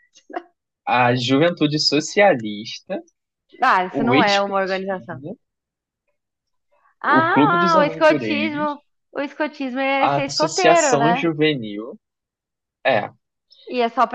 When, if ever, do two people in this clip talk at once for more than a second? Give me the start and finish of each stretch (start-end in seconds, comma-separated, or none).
3.9-5.2, 7.0-8.8, 10.0-11.3